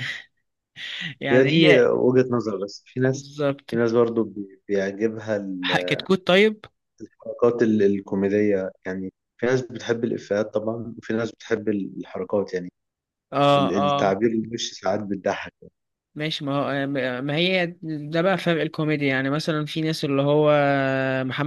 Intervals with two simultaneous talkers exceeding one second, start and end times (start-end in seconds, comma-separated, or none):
none